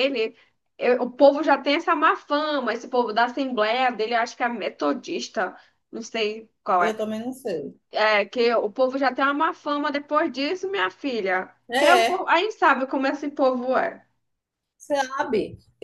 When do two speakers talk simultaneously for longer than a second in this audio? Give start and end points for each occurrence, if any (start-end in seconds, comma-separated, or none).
none